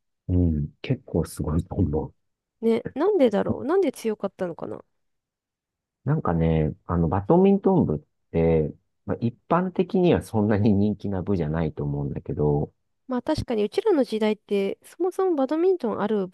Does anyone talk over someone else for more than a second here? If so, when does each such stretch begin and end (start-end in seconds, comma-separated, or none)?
none